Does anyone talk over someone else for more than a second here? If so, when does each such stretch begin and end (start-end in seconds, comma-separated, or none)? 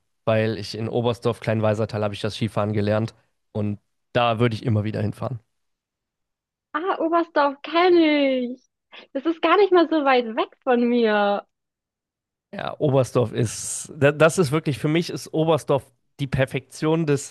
none